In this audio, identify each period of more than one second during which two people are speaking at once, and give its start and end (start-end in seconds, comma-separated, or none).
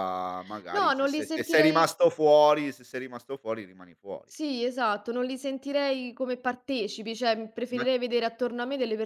0.7-1.9